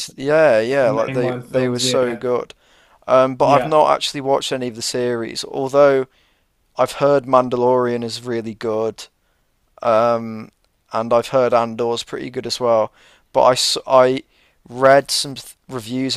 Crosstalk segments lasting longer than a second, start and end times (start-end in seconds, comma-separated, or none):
0.8-2.2